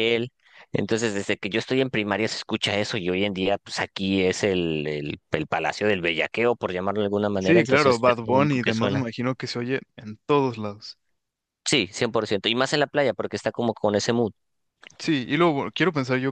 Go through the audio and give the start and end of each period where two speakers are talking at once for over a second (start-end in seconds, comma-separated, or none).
7.4-9.0